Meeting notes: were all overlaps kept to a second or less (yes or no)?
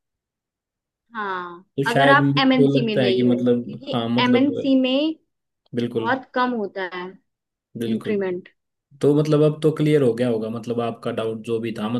no